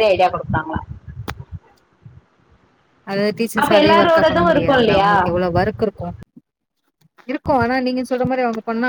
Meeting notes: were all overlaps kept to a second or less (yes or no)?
no